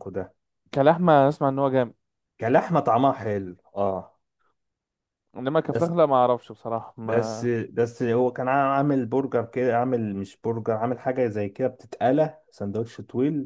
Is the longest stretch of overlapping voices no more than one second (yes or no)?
yes